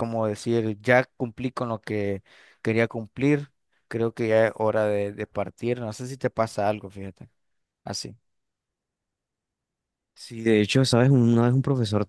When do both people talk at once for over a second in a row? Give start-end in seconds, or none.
none